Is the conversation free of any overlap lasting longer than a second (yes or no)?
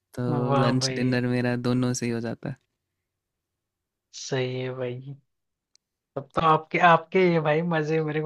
yes